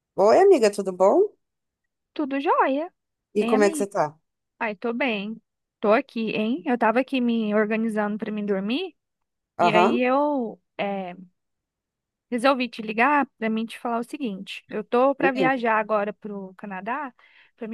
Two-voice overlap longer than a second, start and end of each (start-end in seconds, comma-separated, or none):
none